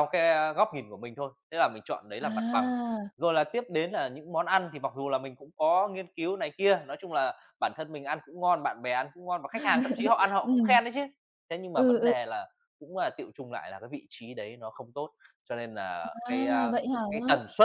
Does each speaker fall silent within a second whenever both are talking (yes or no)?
yes